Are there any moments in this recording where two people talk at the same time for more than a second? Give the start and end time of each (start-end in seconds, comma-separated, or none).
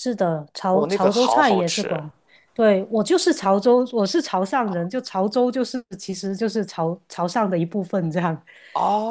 0.7-2.0